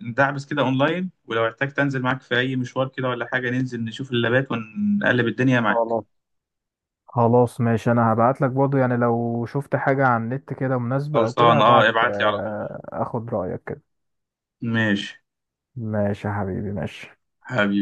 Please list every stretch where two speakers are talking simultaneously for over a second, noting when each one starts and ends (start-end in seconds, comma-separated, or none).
11.1-12.6